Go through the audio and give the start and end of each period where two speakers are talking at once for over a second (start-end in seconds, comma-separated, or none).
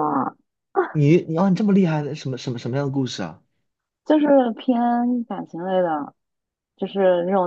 none